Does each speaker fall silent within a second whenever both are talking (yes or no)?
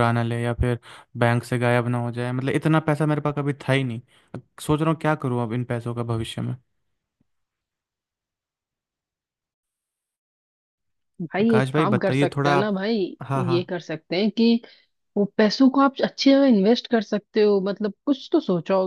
no